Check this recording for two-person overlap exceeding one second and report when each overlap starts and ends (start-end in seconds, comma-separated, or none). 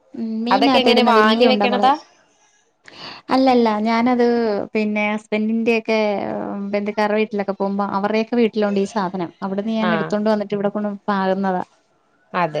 0.5-1.9